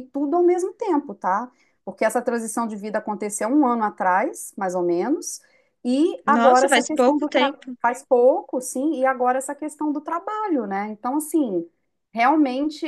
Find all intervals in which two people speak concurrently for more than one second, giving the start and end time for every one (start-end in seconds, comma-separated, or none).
6.2-7.8